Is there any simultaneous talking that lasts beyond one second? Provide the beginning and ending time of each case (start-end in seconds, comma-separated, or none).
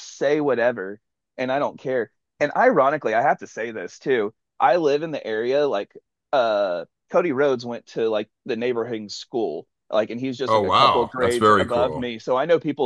10.5-12.1